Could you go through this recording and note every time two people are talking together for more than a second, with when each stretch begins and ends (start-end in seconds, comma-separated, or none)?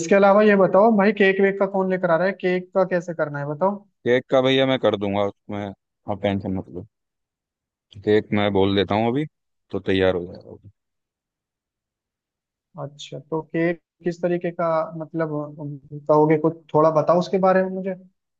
none